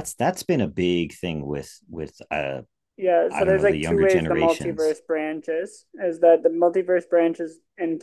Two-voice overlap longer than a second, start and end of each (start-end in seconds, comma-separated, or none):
3.3-5.0